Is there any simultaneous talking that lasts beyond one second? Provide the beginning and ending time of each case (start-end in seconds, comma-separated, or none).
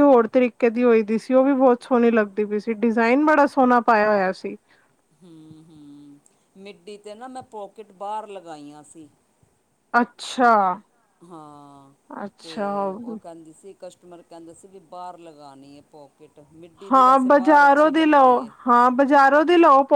16.9-18.5